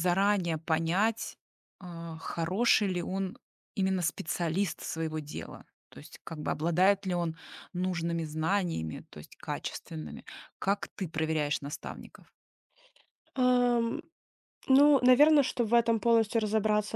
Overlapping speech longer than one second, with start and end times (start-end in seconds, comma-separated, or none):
none